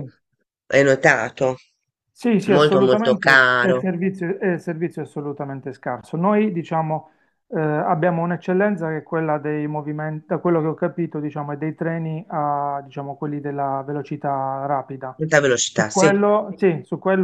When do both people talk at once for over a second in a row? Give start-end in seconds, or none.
2.5-3.9